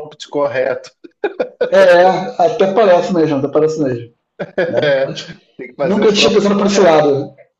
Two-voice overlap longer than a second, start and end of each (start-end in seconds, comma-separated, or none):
5.8-7.0